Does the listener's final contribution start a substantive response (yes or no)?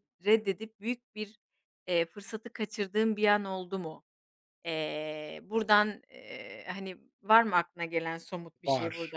yes